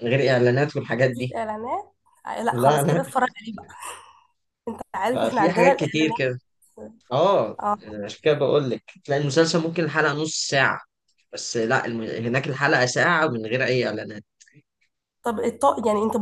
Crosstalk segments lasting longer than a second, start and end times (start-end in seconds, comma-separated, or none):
5.1-6.4